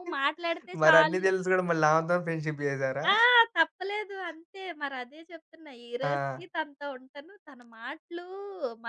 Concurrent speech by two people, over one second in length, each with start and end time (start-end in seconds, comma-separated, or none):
none